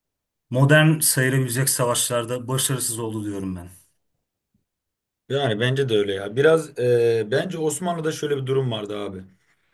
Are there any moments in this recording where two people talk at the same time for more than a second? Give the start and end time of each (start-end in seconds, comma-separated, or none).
none